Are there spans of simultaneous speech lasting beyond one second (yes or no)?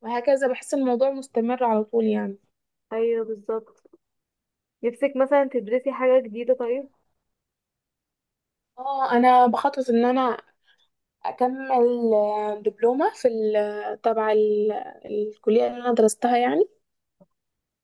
no